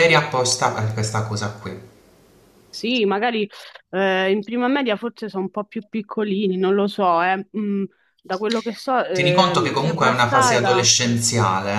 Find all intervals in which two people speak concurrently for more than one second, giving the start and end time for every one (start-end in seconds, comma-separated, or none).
9.1-10.9